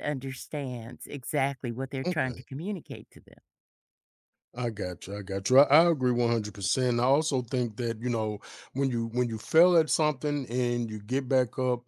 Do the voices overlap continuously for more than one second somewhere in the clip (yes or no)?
no